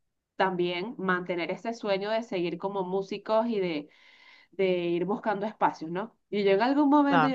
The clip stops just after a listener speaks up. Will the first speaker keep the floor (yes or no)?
yes